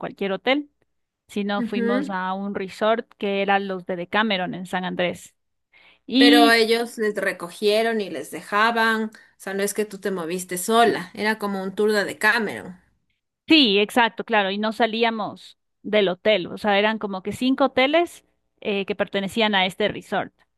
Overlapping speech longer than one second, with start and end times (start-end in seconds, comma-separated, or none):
none